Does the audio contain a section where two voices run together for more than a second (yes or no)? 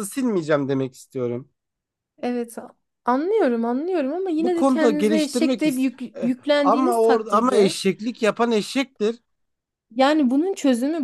yes